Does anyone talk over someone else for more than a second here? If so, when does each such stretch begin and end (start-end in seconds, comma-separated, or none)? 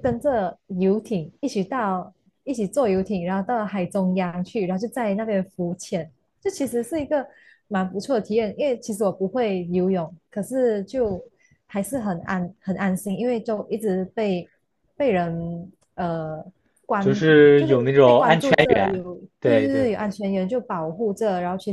17.0-19.9